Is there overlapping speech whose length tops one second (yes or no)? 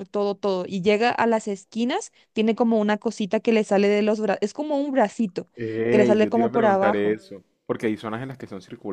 yes